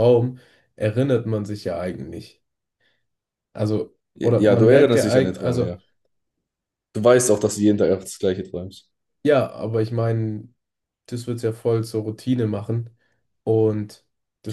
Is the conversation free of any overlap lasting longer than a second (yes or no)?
no